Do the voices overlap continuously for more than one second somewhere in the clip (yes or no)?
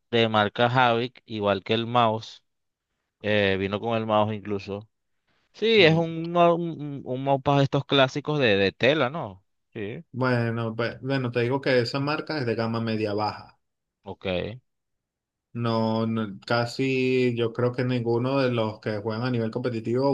no